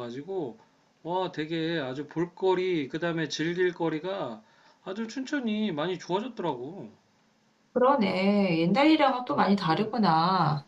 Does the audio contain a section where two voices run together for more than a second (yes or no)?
no